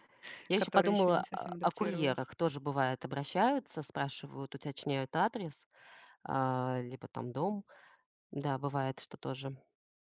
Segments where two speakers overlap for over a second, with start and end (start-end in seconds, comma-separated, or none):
0.6-2.3